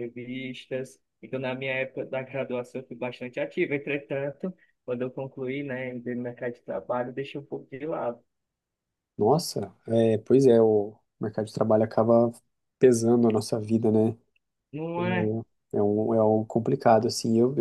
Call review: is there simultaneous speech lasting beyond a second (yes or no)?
no